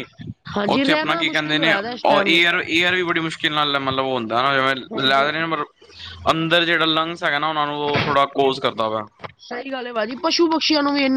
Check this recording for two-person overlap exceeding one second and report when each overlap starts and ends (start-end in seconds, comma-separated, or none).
0.8-2.4